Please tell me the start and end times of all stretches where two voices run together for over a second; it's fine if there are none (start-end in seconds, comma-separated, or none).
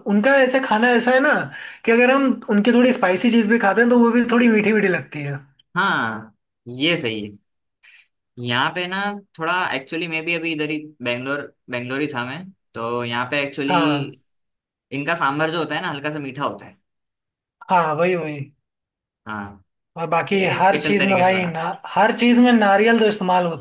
20.4-21.7